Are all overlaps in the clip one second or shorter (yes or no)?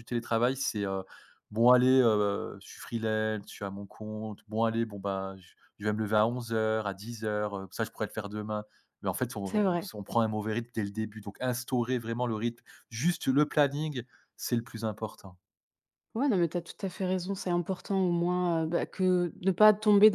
yes